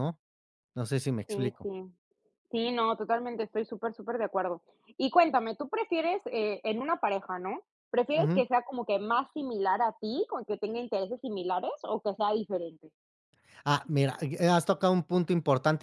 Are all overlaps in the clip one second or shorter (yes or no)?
yes